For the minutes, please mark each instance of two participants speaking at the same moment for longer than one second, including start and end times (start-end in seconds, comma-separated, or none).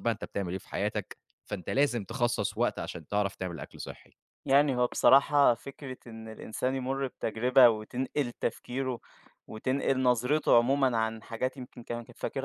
none